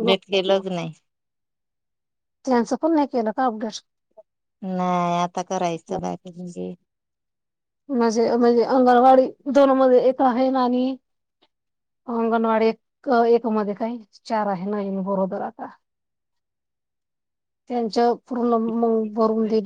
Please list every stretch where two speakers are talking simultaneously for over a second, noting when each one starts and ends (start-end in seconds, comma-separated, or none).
none